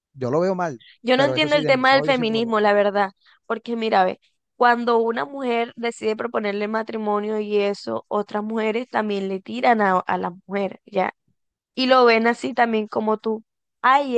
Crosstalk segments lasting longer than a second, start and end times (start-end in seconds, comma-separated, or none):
1.0-2.7